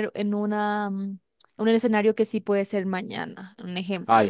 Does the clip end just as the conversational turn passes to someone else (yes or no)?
yes